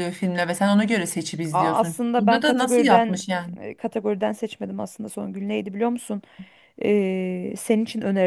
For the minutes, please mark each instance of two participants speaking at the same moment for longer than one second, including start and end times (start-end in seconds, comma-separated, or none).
1.5-3.2